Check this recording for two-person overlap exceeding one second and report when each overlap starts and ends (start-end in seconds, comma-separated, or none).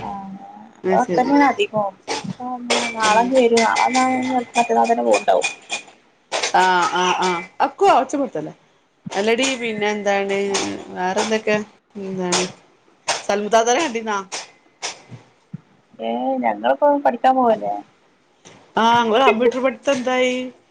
none